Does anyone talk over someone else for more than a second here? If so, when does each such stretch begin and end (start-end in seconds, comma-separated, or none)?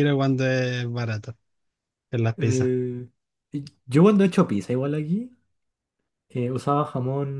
none